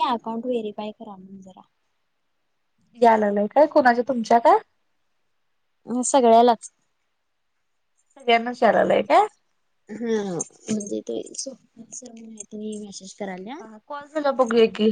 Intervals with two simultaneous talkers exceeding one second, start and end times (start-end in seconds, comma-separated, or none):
none